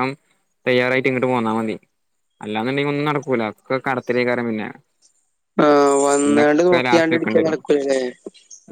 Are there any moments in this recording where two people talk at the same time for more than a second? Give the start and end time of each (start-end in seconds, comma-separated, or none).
6.2-7.6